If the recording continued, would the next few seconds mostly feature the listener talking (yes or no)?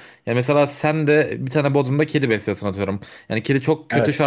no